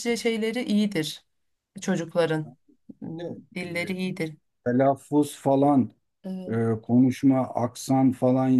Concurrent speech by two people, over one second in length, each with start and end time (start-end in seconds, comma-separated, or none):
none